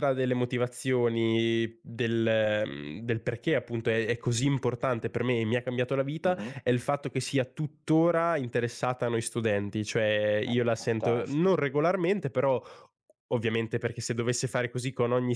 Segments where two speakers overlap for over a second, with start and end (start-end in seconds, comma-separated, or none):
10.4-11.6